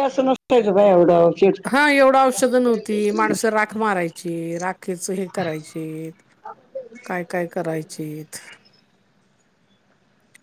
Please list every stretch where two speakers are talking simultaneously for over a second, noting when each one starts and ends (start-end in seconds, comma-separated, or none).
none